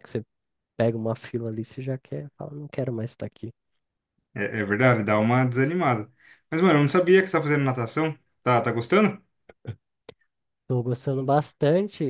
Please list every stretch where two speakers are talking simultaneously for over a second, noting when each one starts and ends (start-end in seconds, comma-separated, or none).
none